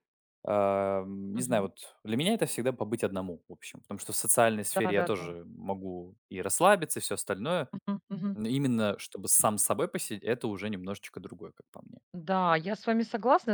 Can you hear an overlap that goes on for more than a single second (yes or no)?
no